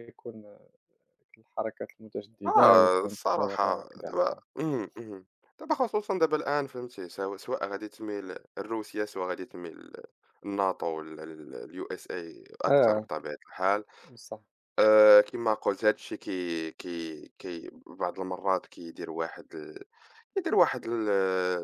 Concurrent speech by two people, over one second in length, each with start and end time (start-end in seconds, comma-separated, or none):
2.5-4.4